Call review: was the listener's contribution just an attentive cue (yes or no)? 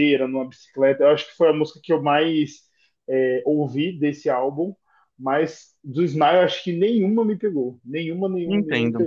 no